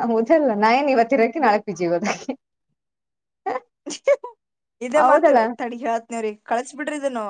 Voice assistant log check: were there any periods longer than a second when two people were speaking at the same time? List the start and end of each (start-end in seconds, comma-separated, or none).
none